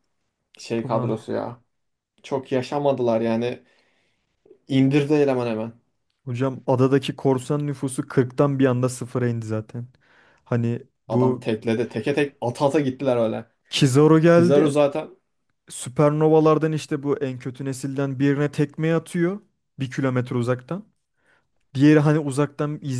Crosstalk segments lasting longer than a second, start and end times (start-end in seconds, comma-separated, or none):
none